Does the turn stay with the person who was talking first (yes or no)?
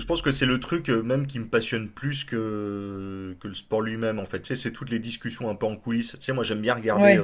yes